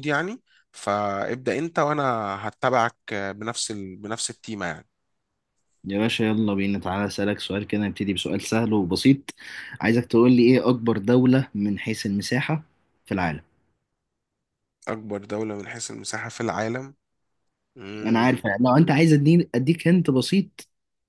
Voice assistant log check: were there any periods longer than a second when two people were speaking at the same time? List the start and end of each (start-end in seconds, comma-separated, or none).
none